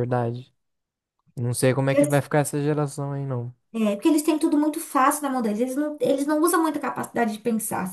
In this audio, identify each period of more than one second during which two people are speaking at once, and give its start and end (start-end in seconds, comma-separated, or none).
none